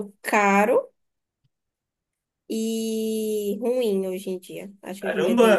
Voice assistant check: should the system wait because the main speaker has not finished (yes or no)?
no